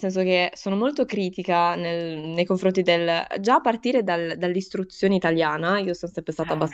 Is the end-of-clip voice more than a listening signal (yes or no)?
no